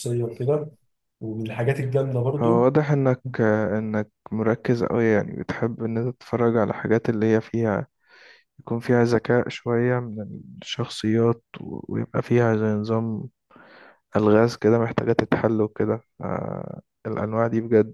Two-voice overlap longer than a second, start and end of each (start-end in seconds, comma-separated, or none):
none